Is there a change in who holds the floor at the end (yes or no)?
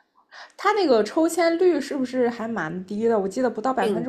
yes